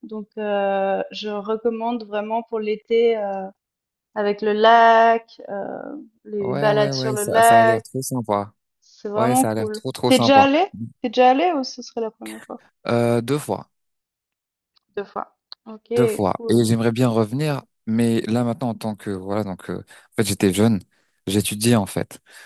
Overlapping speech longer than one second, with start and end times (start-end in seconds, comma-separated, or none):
6.4-7.8, 9.2-10.5